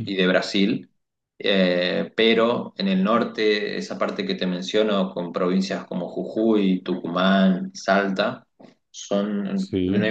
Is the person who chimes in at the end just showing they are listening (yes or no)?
yes